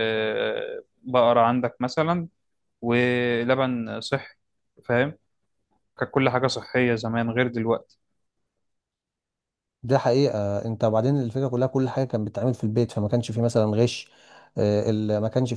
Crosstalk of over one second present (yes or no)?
no